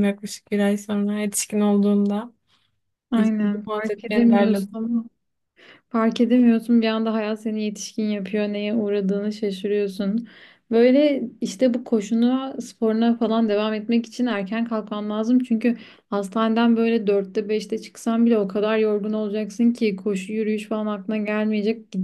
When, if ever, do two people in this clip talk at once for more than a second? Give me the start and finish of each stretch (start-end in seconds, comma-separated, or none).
3.4-4.7